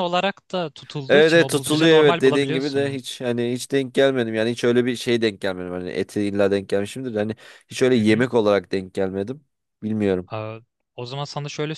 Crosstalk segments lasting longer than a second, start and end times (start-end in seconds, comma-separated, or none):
1.1-3.0